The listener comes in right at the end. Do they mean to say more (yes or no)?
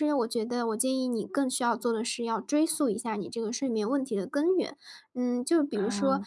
no